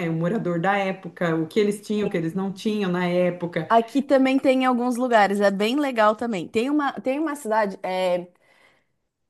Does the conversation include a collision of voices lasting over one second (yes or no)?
no